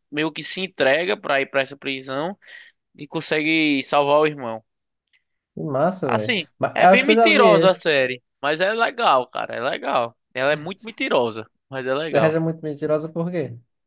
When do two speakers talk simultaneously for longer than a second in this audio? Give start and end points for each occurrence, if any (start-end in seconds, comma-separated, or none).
6.0-7.8